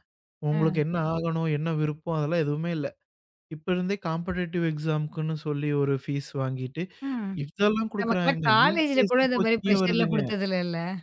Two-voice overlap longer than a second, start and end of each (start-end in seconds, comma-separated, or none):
8.0-10.2